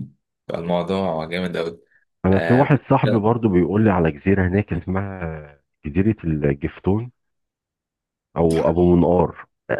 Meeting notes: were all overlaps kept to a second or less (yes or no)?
yes